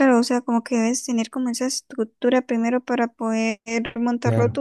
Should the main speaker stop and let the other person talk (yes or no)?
yes